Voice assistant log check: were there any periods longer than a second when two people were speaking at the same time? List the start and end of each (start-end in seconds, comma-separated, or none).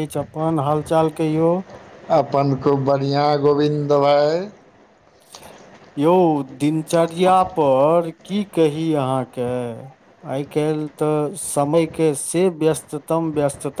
none